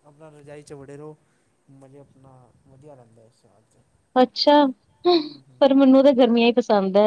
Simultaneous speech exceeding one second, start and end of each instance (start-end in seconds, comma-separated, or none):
none